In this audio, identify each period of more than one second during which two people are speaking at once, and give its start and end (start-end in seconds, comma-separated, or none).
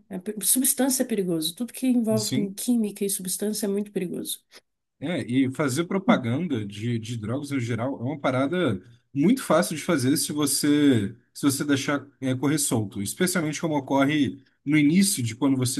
none